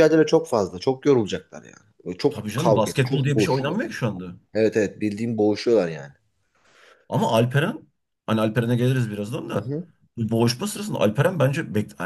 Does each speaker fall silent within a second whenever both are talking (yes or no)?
no